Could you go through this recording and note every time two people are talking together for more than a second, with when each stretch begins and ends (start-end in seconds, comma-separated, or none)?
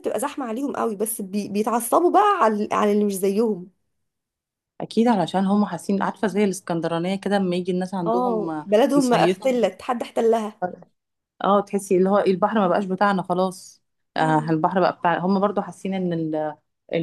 8.1-9.5